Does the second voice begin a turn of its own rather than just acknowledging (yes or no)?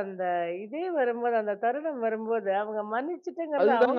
yes